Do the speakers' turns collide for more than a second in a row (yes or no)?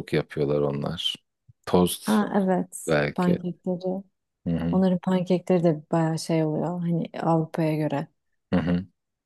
no